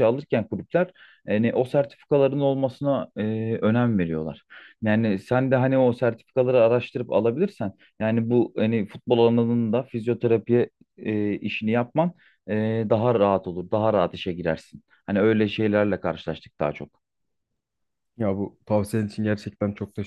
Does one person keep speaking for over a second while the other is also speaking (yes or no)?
no